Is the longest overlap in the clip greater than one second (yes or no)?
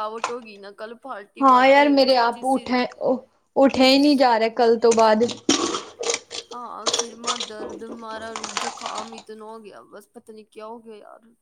yes